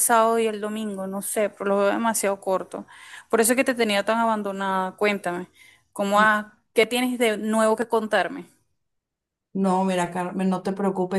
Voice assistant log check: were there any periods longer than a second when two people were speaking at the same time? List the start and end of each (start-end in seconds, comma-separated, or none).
none